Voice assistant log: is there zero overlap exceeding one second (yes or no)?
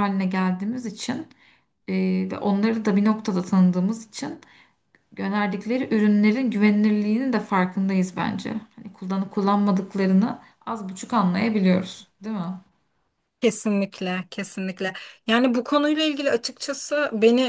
yes